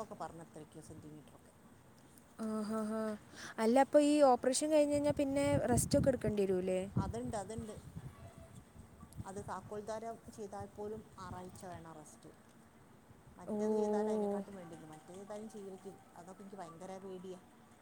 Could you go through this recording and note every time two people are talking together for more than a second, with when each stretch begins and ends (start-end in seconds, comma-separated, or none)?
none